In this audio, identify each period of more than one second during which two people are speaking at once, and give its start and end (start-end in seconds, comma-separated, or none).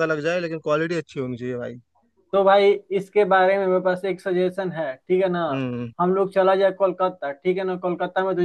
none